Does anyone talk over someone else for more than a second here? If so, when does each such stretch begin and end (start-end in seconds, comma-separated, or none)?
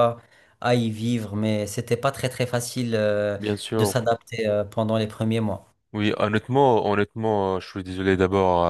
none